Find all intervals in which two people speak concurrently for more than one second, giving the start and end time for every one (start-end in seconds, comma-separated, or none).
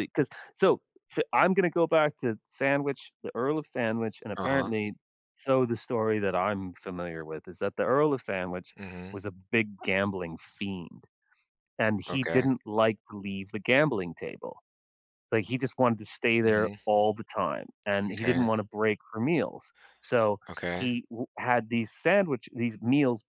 none